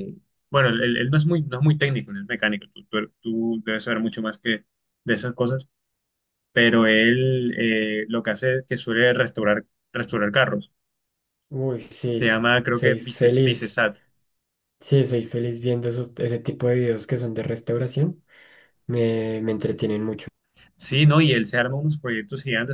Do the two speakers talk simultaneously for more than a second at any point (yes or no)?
yes